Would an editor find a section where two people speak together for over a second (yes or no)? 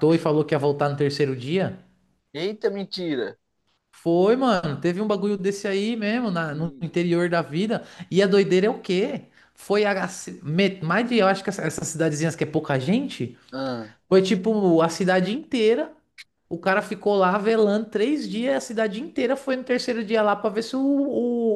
no